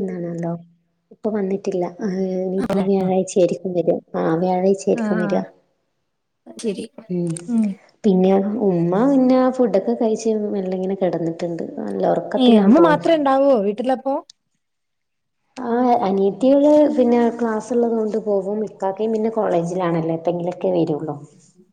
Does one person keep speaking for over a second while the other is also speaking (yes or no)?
no